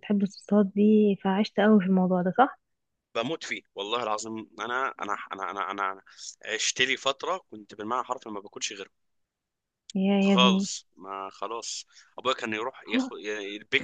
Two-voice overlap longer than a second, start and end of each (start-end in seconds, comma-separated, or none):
none